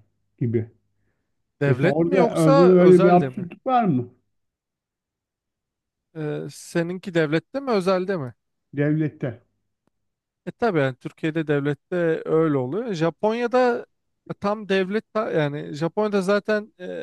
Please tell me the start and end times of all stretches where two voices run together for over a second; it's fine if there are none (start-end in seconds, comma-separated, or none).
1.7-3.5